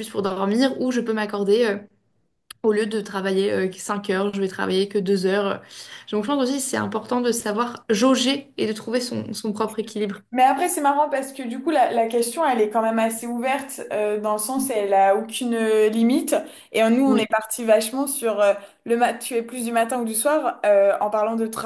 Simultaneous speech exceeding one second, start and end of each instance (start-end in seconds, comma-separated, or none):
none